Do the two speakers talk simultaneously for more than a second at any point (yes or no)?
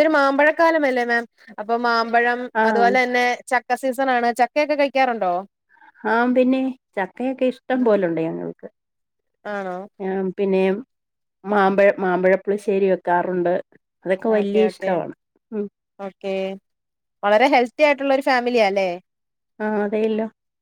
no